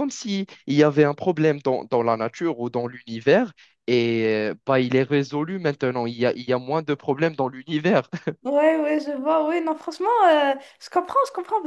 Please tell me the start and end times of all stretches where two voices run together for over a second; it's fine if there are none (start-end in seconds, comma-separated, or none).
none